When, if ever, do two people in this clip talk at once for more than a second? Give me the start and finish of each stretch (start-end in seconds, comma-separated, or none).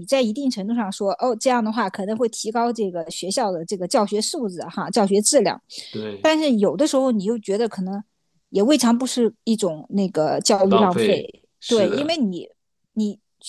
10.6-12.2